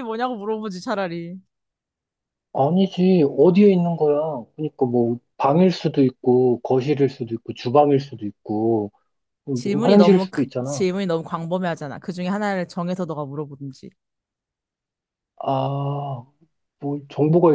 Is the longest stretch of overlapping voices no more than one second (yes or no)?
no